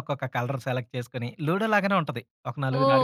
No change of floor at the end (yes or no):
no